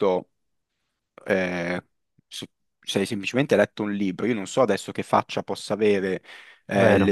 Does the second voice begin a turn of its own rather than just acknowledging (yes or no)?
no